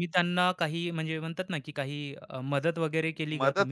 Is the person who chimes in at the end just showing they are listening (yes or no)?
no